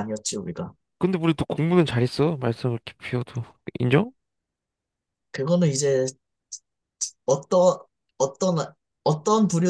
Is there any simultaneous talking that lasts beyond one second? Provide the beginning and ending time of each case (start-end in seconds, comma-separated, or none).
none